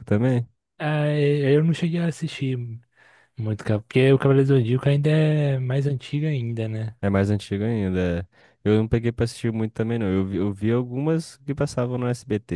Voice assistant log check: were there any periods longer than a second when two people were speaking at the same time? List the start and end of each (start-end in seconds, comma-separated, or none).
none